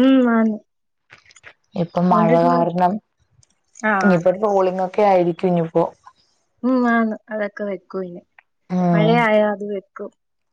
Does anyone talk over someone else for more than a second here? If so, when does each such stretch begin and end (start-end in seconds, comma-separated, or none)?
none